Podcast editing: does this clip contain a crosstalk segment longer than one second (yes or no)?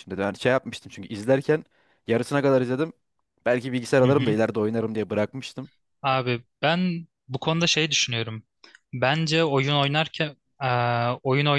no